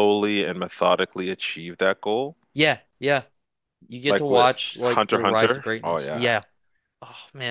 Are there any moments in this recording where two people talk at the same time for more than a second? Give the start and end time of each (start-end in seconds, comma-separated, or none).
4.1-6.2